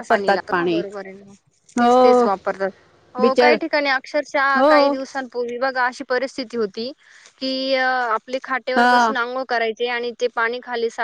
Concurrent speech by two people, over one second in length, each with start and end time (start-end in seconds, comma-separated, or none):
none